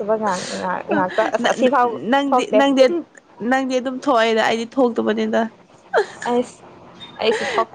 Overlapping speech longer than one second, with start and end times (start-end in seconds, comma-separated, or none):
none